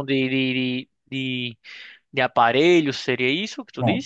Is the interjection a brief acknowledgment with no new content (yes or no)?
no